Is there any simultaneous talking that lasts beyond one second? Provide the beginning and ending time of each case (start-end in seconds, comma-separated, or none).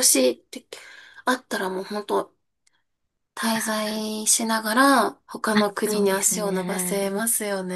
5.5-7.1